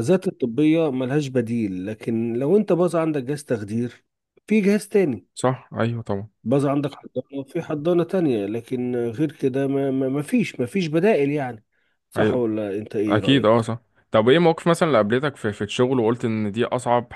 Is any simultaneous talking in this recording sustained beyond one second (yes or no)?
no